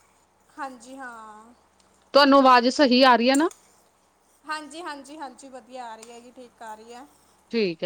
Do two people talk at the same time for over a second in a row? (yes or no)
no